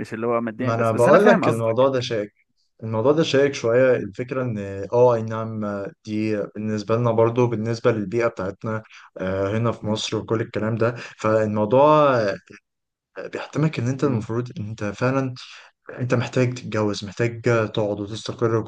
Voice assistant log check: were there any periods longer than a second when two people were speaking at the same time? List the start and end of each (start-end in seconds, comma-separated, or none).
0.6-2.0